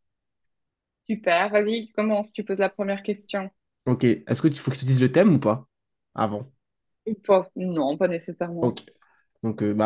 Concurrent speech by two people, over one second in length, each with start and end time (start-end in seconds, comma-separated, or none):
none